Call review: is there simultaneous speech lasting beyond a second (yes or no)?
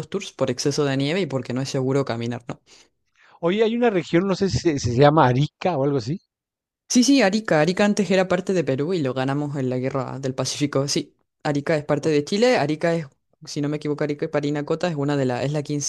no